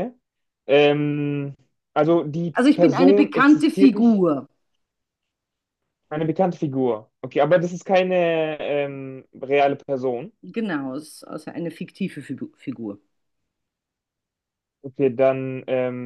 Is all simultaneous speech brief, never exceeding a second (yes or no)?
no